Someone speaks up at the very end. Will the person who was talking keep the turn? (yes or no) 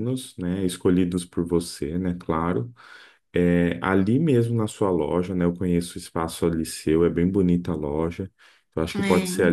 yes